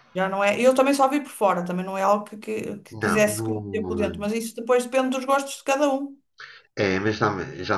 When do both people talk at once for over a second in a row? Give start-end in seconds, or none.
2.9-4.3